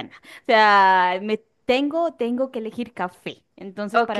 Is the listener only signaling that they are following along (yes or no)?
yes